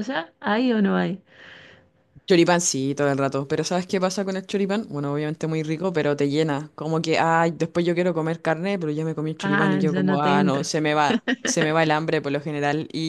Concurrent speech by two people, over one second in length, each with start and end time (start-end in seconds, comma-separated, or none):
9.4-10.7